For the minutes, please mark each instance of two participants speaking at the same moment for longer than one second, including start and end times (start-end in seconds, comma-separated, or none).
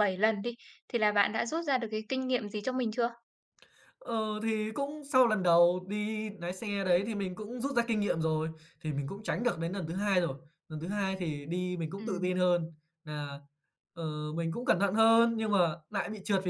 none